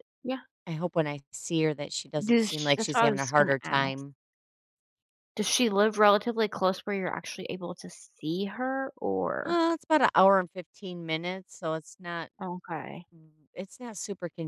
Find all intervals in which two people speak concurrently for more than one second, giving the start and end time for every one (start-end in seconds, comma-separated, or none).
2.2-4.0